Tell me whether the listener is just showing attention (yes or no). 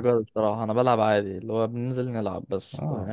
no